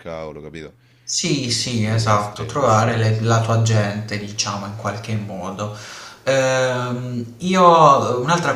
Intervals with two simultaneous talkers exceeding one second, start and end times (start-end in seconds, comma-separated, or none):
1.4-2.9